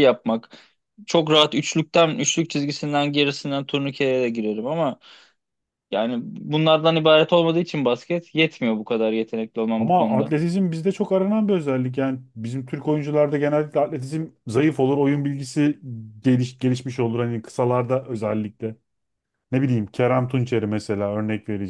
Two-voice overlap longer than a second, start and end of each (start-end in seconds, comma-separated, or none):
none